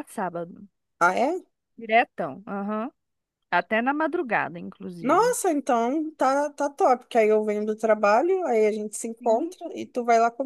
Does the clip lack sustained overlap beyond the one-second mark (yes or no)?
yes